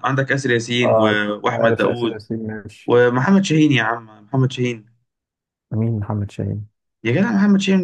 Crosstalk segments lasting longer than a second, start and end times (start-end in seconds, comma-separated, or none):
0.8-2.2